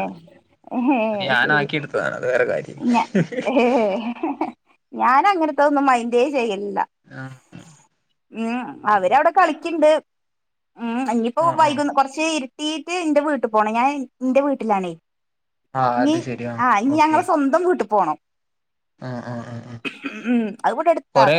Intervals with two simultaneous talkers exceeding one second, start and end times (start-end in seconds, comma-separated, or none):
1.4-2.8